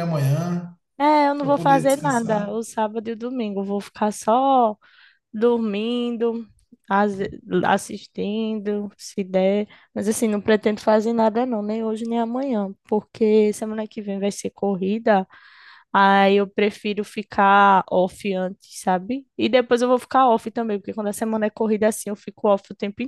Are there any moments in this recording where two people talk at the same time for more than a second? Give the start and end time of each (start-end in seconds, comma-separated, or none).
1.4-2.6